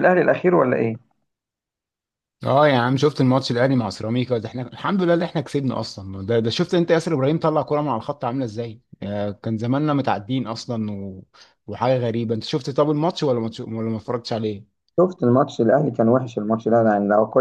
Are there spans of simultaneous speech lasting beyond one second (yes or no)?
no